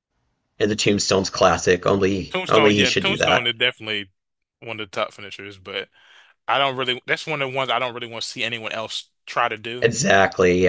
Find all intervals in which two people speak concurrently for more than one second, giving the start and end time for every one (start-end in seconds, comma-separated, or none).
2.3-3.5